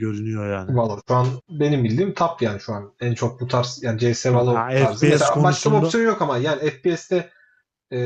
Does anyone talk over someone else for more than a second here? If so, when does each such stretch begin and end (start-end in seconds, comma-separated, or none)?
4.2-6.0